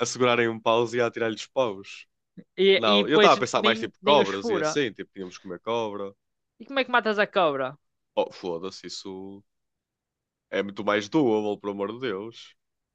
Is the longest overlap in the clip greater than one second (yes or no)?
yes